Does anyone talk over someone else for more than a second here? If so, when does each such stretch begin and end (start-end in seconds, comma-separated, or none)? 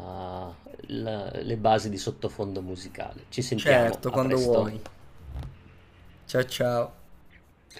3.6-4.9